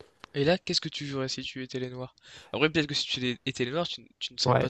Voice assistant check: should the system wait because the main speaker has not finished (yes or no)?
no